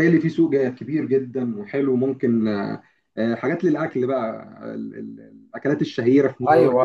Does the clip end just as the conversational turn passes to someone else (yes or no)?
yes